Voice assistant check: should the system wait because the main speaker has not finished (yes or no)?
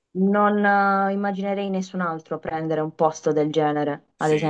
no